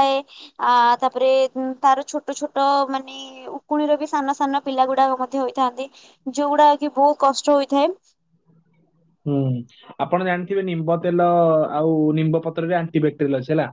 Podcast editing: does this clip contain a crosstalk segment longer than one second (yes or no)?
no